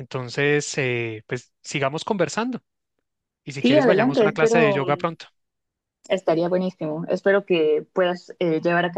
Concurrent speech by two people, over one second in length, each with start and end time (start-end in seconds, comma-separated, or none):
3.6-5.1